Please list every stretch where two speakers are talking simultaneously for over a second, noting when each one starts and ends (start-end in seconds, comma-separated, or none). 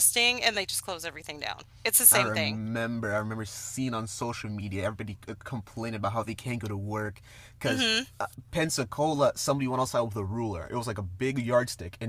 none